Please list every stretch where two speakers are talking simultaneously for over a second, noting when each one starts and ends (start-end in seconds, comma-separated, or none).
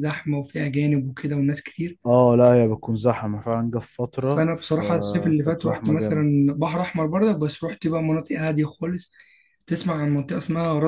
4.1-6.3